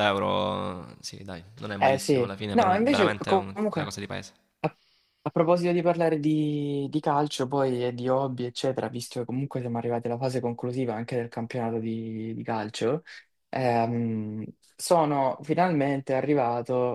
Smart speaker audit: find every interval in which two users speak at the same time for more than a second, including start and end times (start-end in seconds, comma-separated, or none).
1.8-3.9